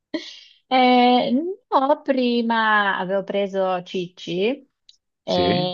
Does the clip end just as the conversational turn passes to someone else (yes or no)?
no